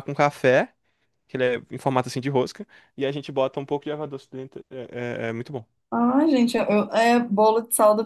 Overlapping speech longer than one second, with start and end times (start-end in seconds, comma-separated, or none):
none